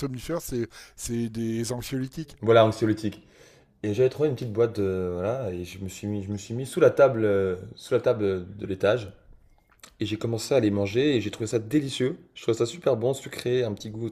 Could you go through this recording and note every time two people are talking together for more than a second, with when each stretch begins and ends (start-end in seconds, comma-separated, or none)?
none